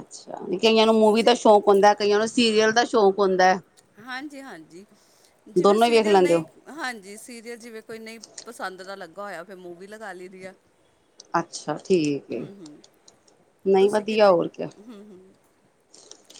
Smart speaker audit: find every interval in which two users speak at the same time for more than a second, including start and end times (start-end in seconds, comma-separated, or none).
none